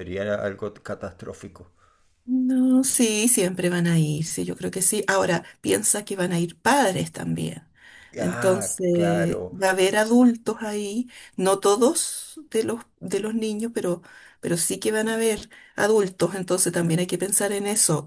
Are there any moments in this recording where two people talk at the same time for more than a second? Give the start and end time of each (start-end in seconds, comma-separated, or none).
8.2-9.6